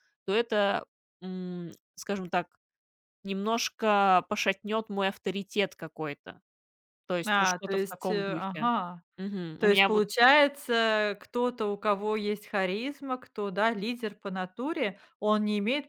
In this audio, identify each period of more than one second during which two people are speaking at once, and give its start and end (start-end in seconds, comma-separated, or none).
7.2-8.7